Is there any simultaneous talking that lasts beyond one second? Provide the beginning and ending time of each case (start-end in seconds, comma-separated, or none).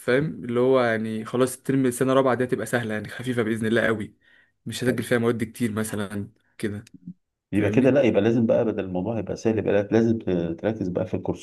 none